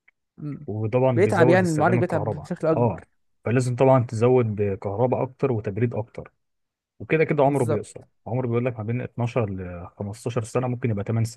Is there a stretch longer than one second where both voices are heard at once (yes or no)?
yes